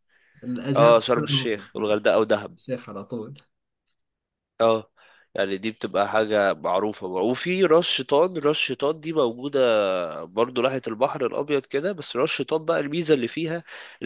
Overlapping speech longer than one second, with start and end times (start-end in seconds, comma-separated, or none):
0.8-2.0